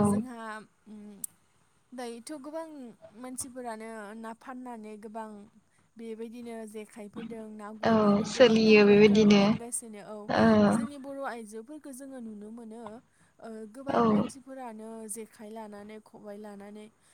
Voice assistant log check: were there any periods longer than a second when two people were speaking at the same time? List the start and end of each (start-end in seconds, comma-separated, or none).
7.9-9.4